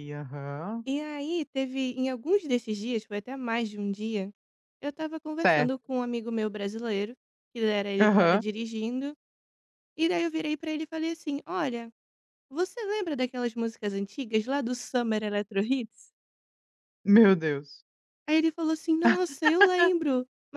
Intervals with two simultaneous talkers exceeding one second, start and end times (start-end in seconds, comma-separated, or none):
none